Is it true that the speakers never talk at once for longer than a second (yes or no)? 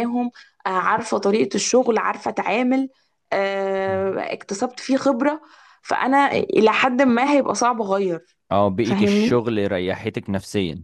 yes